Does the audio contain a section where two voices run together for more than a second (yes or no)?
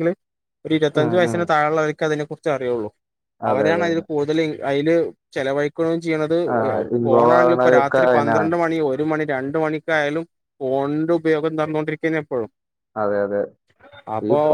yes